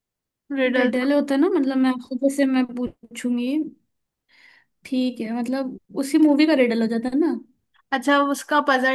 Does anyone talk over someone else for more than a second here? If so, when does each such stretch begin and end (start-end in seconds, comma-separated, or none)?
none